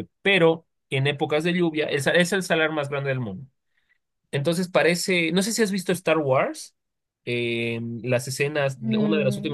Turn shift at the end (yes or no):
no